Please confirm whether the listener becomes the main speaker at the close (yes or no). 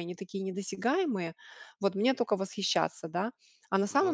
no